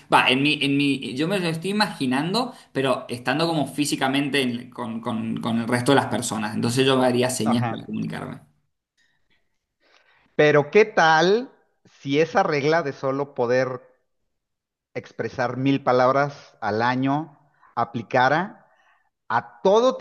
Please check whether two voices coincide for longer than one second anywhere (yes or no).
no